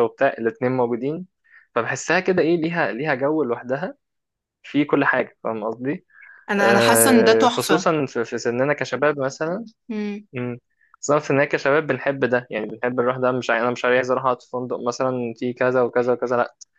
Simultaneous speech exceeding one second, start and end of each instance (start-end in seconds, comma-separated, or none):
6.6-7.9